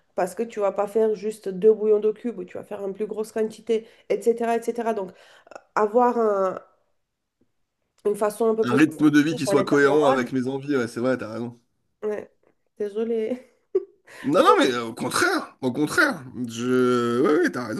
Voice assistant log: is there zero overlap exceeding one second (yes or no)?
no